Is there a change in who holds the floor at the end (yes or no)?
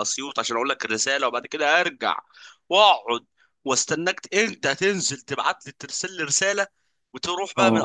no